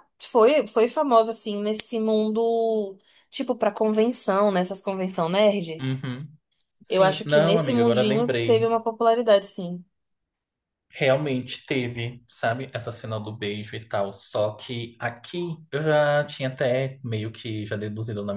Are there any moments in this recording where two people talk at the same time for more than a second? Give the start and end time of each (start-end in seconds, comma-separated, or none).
6.9-8.7